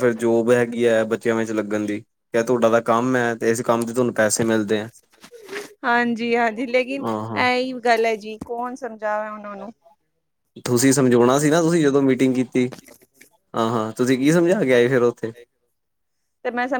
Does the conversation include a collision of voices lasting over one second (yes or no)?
no